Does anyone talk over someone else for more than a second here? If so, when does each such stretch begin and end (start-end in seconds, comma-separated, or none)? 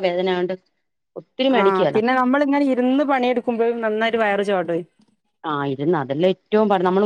none